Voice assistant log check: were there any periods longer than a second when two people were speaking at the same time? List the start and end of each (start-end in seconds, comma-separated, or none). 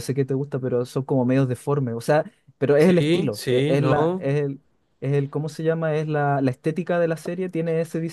2.8-4.3